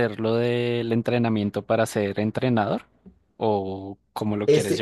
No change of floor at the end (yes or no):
no